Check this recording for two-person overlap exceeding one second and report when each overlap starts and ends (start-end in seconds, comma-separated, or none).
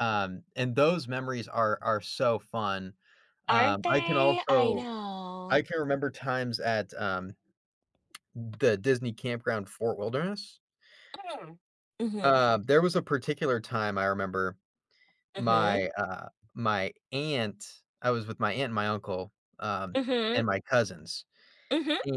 3.5-4.9